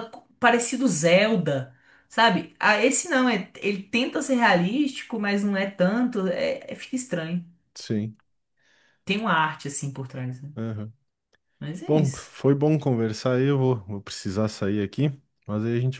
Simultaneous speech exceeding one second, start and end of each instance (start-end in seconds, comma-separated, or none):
none